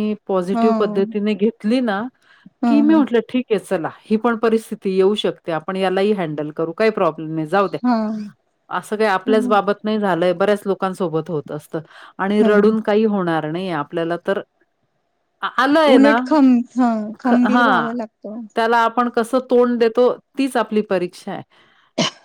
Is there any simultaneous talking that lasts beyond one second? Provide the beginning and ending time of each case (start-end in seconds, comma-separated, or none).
none